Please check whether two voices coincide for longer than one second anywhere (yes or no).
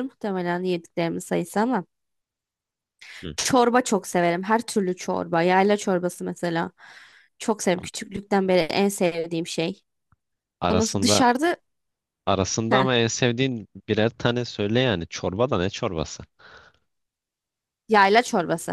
no